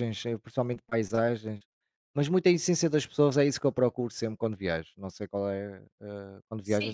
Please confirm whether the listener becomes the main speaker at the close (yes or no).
yes